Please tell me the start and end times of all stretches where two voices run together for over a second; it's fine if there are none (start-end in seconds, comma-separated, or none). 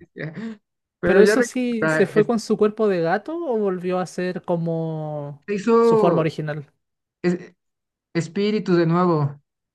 1.0-2.3